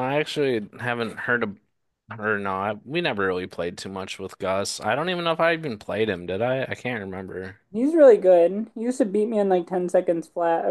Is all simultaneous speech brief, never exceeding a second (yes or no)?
yes